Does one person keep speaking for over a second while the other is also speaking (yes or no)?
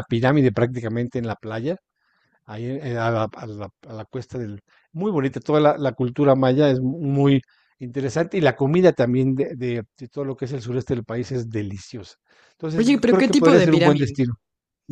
yes